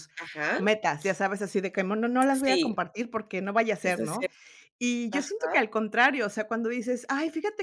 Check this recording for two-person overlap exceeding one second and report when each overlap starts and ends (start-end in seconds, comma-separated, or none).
none